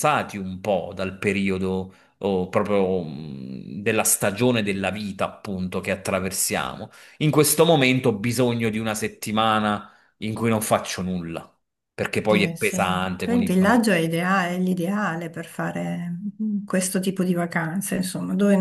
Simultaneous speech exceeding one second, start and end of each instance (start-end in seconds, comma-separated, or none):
12.2-13.8